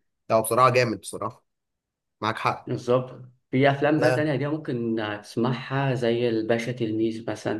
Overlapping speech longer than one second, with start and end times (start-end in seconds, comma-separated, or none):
none